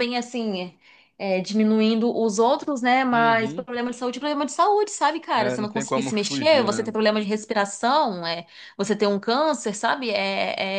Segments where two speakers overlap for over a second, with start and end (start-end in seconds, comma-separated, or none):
5.4-6.9